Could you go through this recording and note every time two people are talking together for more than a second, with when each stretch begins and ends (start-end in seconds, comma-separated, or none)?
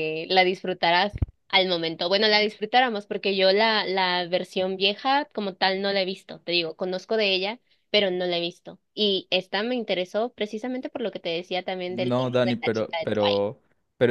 11.9-13.5